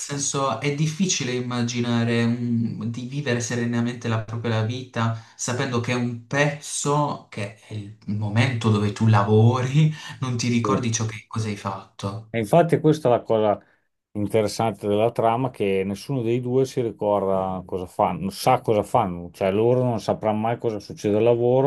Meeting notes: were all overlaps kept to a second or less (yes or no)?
yes